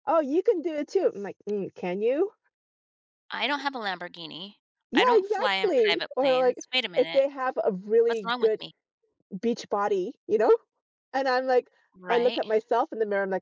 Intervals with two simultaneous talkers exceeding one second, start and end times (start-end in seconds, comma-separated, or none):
4.9-7.2